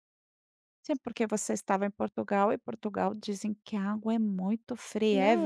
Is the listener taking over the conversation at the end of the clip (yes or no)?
yes